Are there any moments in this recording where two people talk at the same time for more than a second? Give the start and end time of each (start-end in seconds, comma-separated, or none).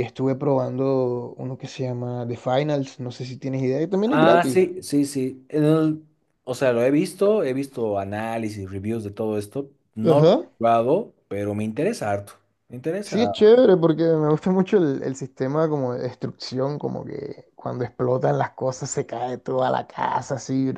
none